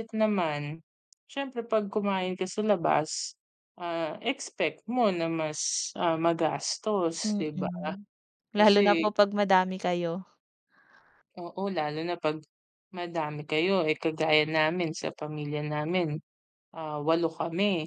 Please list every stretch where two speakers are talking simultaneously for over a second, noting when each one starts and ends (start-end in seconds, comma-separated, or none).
none